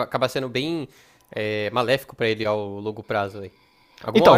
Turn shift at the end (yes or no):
yes